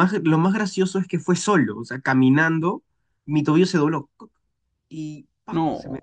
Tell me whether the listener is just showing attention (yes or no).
yes